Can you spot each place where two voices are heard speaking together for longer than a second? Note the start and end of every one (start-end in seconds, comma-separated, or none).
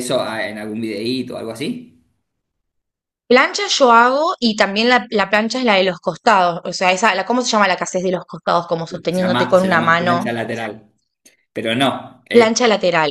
8.9-10.3